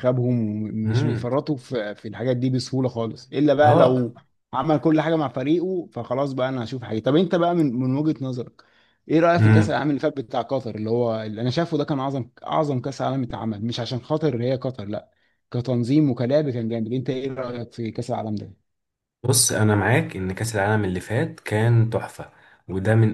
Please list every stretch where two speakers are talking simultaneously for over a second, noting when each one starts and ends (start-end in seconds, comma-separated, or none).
none